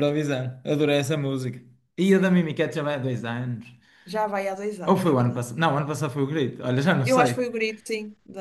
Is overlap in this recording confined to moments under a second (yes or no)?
yes